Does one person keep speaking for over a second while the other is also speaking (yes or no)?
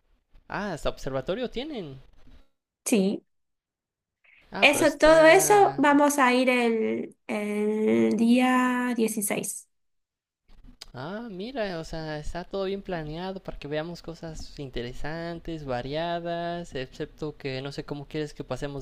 yes